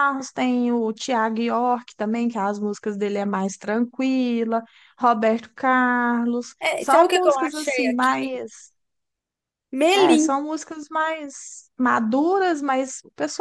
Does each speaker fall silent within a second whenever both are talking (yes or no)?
no